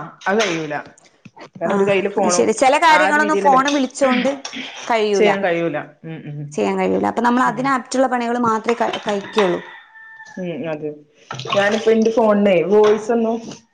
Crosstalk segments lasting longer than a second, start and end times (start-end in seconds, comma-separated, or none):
none